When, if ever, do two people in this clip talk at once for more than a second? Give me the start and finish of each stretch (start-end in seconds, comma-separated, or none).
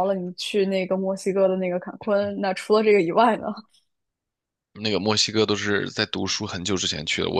none